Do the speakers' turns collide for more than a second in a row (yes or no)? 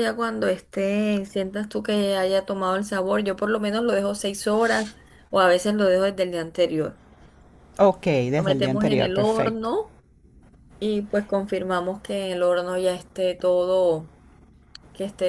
yes